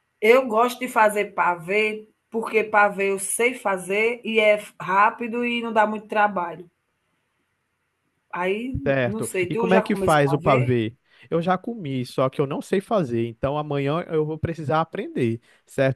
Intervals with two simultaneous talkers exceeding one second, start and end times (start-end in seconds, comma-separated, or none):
8.9-10.8